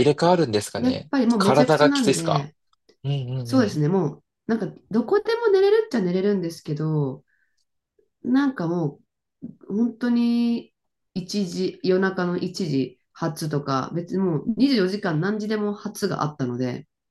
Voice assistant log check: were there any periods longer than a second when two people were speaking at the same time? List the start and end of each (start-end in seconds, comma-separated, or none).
0.8-2.5